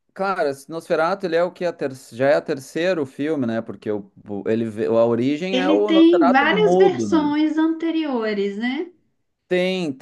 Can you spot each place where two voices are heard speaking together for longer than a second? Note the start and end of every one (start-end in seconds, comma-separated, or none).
5.5-7.3